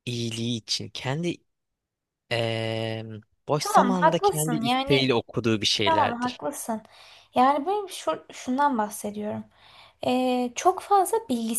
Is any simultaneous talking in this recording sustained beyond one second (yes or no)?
yes